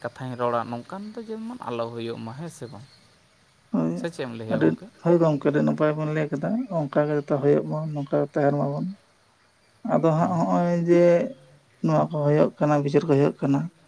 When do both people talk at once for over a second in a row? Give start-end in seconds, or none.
none